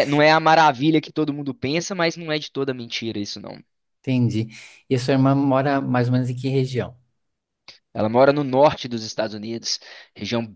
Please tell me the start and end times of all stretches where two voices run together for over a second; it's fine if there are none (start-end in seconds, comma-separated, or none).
none